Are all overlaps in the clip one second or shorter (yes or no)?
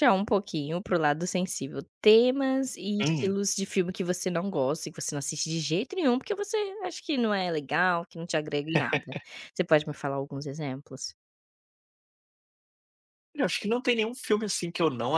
yes